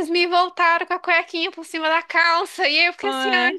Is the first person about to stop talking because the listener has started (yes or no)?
no